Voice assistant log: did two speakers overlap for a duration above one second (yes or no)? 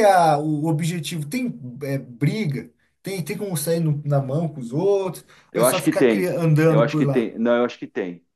yes